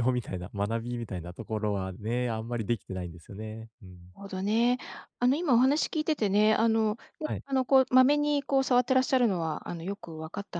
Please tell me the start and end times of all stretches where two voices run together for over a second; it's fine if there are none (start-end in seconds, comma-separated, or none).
none